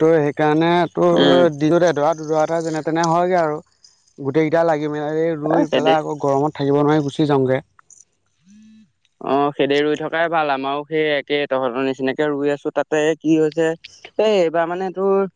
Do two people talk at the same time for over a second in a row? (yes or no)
no